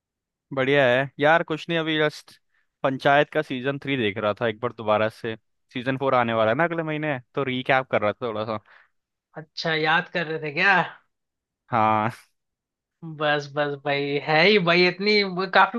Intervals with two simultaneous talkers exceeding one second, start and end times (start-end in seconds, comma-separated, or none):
none